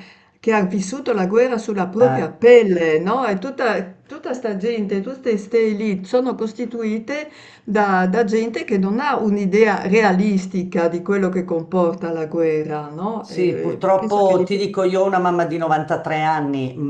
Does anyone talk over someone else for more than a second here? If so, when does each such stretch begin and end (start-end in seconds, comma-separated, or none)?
13.2-14.7